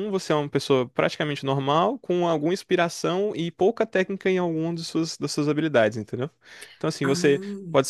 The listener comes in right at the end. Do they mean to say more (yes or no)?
no